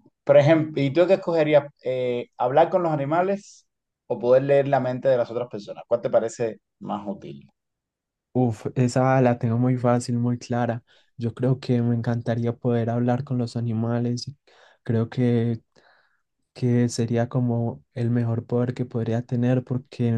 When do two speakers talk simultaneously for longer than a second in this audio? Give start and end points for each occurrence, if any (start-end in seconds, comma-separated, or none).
none